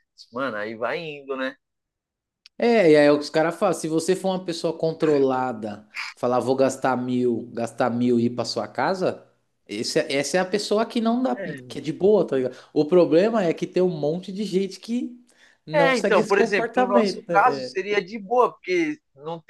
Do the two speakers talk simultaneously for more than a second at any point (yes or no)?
yes